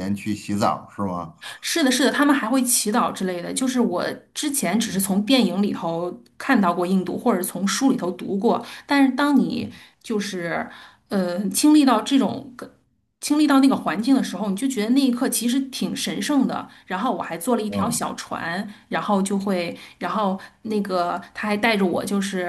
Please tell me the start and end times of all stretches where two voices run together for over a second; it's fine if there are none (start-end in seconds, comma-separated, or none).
none